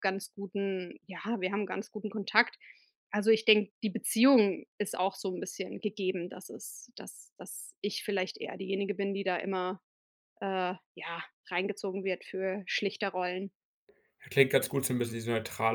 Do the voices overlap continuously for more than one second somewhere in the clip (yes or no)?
no